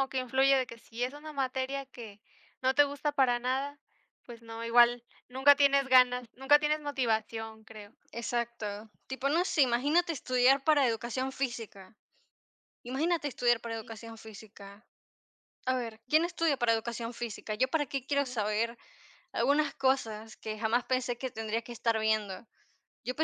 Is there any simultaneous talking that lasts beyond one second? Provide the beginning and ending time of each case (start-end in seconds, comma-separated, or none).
none